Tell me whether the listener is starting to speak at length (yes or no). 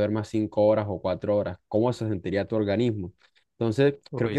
no